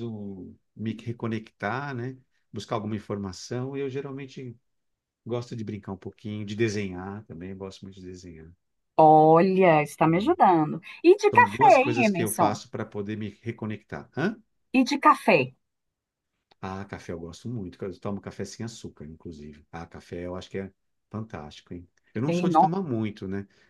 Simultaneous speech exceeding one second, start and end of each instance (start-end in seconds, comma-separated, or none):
11.3-12.6